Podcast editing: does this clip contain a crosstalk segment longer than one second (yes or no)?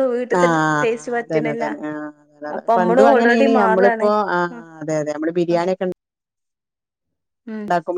yes